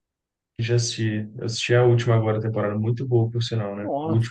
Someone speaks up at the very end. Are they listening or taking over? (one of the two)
taking over